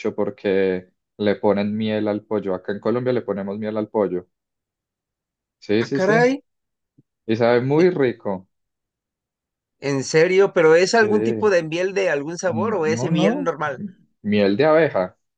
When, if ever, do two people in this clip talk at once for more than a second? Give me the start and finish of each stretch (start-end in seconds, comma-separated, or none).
12.5-13.8